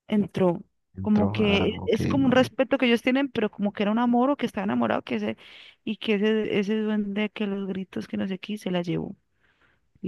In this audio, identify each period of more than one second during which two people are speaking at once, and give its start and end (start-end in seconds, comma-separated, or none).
1.0-2.5